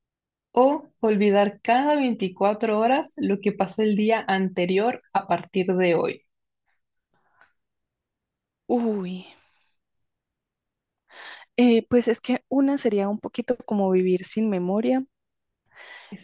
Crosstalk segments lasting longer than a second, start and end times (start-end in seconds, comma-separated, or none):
none